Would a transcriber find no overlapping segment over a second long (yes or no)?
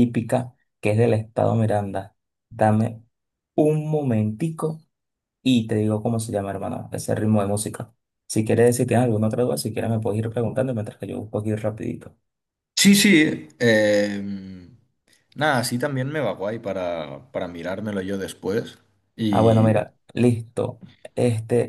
yes